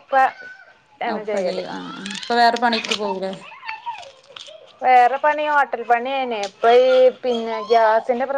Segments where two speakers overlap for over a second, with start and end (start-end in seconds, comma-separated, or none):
none